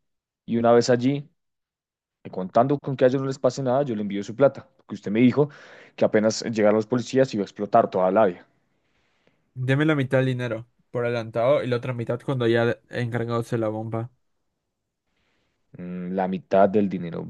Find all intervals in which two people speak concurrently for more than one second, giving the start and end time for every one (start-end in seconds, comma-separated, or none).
none